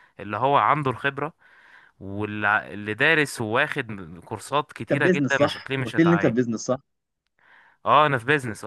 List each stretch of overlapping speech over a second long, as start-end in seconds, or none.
4.8-6.3